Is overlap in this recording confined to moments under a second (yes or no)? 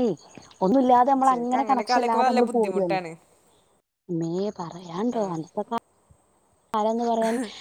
no